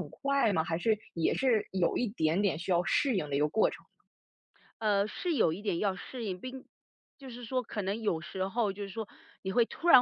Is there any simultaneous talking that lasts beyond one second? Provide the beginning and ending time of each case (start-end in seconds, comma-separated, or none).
none